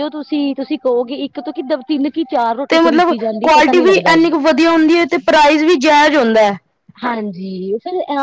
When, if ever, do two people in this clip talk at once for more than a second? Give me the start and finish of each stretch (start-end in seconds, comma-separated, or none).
2.7-4.3